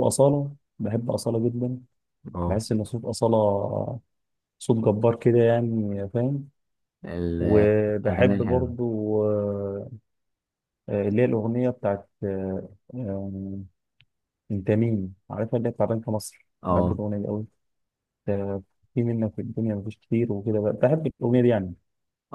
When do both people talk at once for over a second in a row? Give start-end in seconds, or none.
7.4-8.7